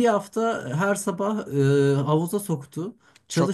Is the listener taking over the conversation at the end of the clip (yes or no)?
no